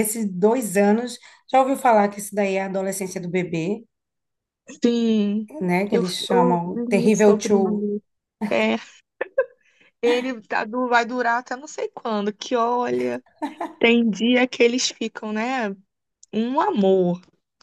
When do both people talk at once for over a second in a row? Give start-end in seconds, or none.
5.9-7.5